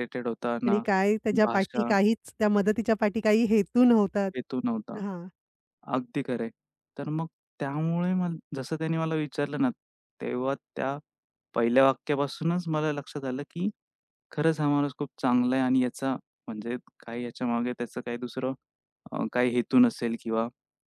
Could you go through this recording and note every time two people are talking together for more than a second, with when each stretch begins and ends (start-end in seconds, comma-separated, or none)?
none